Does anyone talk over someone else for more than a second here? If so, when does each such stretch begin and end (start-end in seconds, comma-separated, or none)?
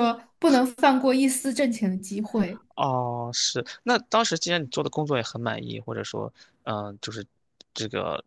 none